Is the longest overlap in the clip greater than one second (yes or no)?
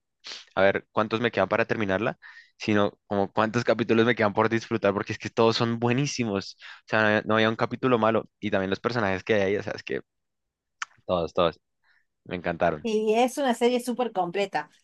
no